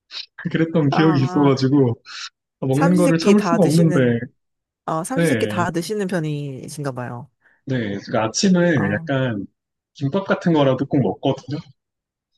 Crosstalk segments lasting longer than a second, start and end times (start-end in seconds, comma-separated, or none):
2.7-4.0